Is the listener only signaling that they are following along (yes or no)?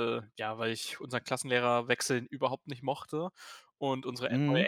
yes